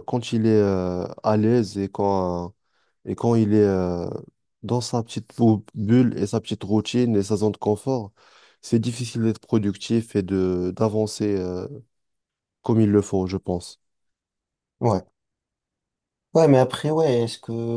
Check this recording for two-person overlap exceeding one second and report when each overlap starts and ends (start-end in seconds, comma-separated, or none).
none